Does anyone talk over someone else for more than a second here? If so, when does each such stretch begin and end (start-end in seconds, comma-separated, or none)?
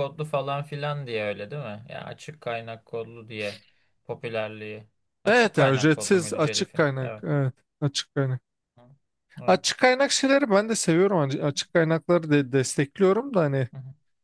5.3-7.2